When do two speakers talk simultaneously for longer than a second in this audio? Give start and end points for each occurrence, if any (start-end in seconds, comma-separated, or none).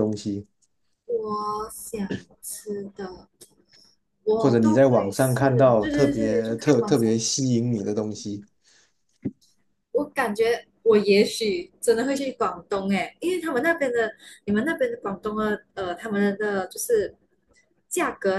4.4-7.2